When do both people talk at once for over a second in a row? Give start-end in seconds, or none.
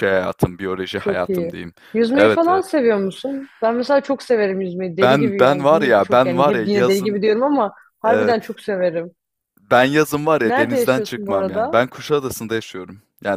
5.0-7.2, 10.4-11.8